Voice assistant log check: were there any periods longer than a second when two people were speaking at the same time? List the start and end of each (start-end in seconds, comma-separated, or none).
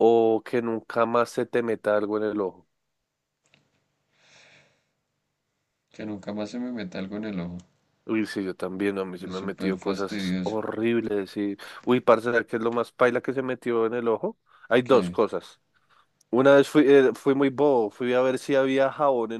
9.2-10.6